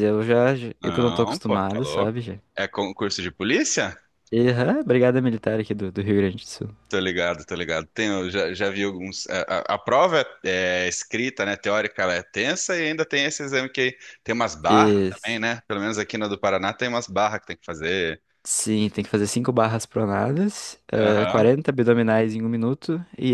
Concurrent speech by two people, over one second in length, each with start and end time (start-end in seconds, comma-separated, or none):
0.8-2.1